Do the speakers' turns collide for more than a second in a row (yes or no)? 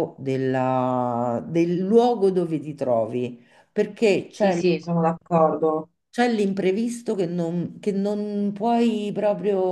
no